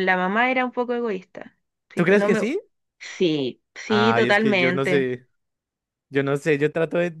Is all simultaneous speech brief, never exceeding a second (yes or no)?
no